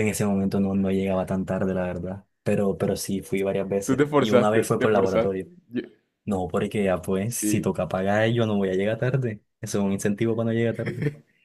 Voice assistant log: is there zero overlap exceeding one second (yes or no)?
no